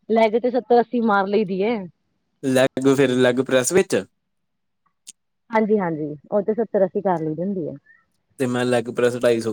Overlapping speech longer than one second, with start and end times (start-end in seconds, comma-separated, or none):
none